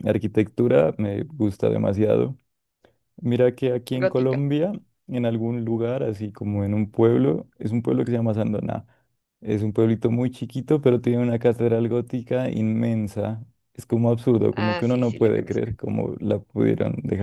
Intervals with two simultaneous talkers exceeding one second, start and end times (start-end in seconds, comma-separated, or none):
14.5-15.7